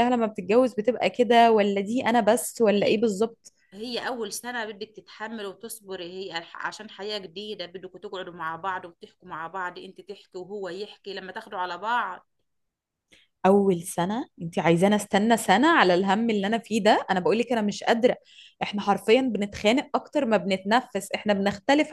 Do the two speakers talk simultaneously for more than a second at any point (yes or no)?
no